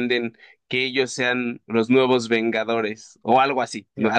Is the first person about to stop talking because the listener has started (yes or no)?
yes